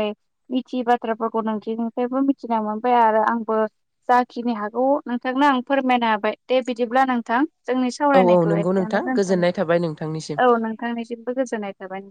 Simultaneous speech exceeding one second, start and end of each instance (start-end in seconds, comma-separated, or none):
8.2-10.3